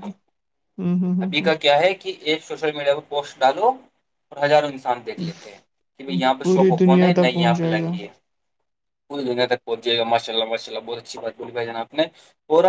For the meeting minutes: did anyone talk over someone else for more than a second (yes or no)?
yes